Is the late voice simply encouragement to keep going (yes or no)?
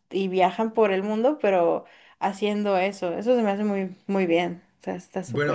no